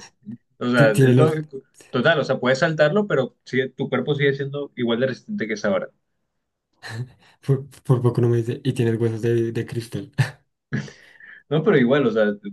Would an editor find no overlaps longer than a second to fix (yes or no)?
yes